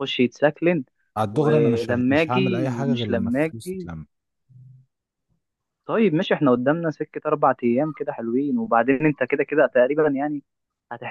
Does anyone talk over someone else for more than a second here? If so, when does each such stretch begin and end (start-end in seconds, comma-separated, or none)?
1.3-3.9